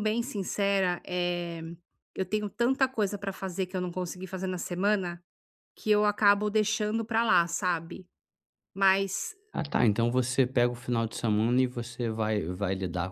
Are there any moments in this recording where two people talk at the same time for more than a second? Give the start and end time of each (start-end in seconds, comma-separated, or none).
none